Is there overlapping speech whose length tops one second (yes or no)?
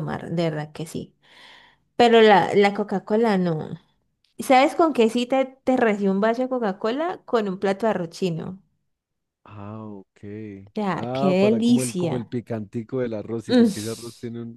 yes